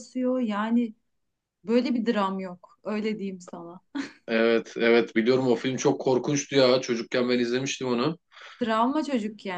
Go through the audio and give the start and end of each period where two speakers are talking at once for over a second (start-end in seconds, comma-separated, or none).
none